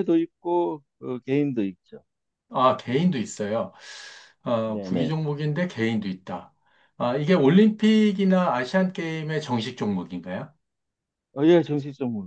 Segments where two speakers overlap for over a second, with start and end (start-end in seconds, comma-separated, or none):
none